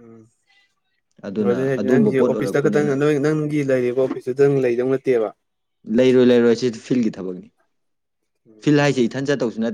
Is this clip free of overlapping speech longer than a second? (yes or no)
no